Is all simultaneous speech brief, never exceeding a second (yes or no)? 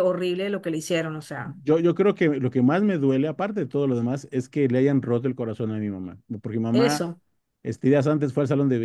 yes